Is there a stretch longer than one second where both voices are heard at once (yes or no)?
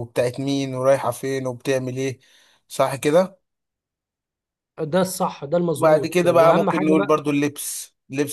yes